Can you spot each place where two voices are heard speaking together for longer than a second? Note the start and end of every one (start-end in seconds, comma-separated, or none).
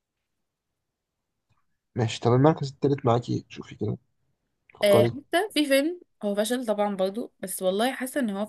none